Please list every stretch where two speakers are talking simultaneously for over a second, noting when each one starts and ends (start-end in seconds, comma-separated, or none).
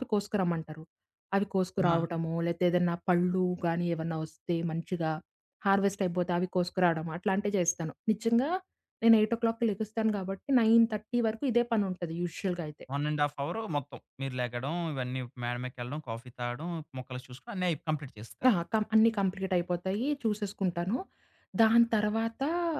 none